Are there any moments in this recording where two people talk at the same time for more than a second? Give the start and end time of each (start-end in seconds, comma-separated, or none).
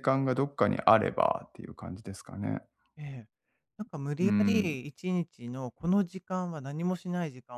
none